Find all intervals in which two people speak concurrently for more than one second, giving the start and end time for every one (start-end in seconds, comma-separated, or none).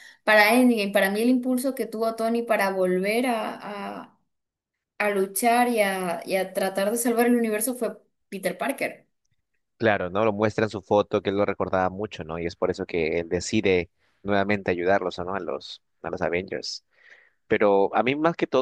none